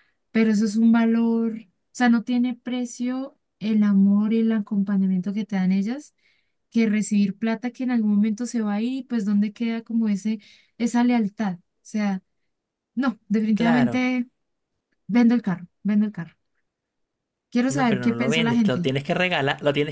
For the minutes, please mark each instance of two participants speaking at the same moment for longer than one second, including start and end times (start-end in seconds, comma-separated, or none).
17.7-18.9